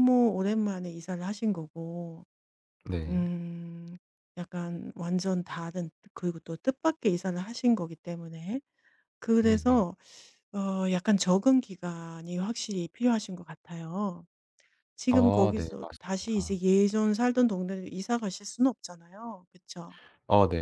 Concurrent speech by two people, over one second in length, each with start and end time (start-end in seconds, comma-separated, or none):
15.1-16.6